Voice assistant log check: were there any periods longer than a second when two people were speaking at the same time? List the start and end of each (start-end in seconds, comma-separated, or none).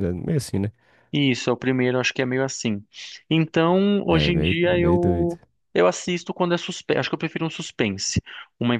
4.1-5.3